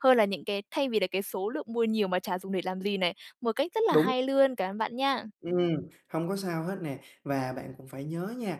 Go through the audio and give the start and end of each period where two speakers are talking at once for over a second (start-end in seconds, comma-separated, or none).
none